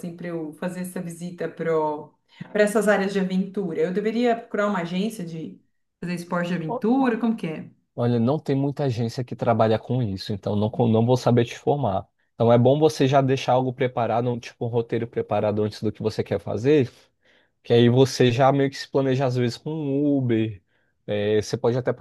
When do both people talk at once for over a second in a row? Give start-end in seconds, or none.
none